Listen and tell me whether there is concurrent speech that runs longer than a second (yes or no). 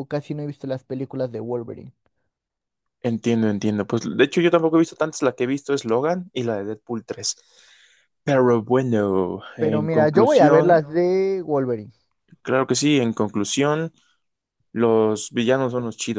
yes